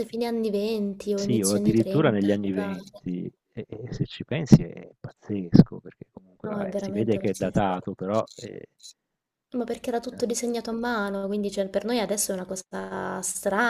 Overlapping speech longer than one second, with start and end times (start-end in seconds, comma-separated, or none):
1.1-2.8, 6.4-7.8